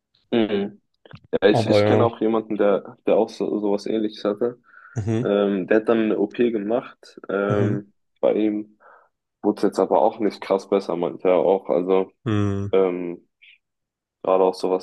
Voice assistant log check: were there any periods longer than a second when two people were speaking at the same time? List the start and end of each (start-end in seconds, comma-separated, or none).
none